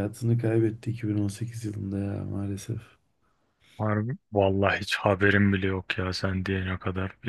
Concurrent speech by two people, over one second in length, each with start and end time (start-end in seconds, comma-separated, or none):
none